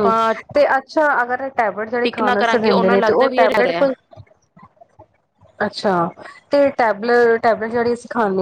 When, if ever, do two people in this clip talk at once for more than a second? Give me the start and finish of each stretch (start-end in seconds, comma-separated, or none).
2.0-3.9